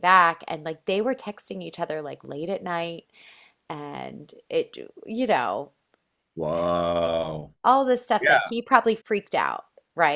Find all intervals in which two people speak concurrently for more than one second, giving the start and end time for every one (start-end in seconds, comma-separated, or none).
none